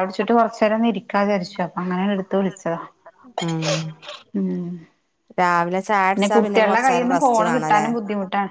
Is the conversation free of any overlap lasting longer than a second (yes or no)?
no